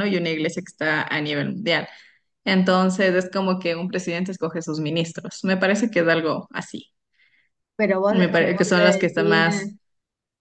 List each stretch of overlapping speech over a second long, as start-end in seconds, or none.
8.1-9.8